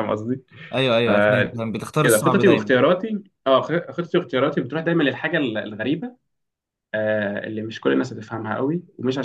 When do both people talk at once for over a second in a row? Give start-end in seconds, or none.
1.0-2.7